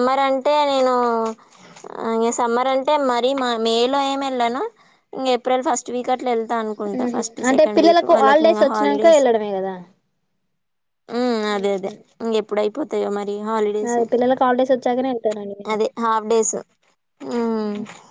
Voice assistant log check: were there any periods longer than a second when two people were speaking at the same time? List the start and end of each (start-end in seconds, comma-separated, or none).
7.0-9.2